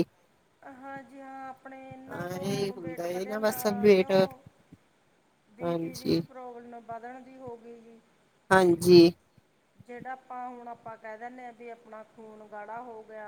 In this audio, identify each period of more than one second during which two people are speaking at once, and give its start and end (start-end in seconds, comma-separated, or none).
2.1-4.1